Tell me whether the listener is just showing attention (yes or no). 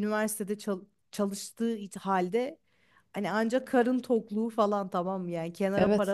yes